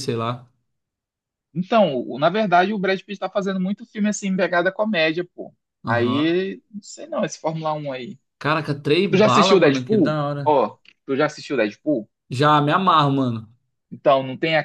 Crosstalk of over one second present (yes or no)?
yes